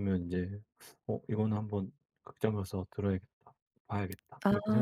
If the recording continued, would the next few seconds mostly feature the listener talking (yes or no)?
yes